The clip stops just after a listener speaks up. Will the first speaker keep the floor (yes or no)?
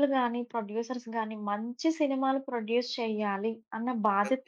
yes